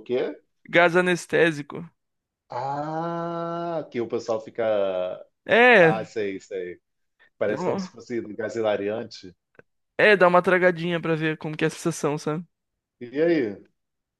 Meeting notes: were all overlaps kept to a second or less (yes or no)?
yes